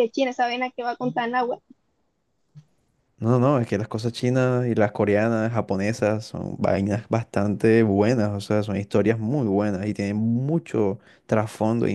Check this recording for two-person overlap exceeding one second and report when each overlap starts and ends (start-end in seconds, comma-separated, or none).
none